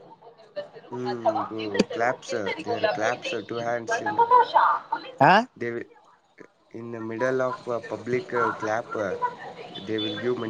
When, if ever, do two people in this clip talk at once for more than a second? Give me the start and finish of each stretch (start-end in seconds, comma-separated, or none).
1.1-4.2